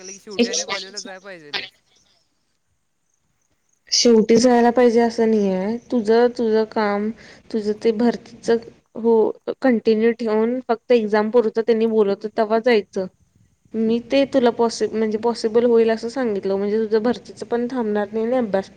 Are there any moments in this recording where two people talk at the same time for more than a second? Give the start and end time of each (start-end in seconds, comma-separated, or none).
none